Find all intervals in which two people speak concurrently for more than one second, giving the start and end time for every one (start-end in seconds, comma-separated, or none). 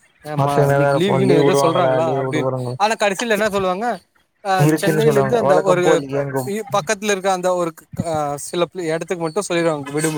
4.7-6.5